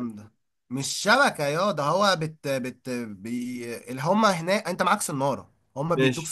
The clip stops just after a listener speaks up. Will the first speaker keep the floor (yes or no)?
yes